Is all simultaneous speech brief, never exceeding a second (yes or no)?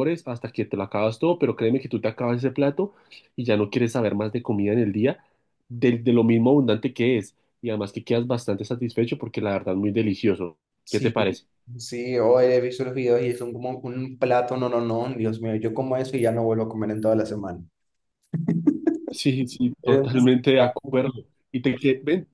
no